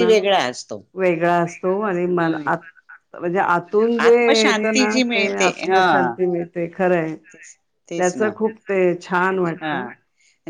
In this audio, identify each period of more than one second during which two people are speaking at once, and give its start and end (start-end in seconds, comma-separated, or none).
4.1-6.1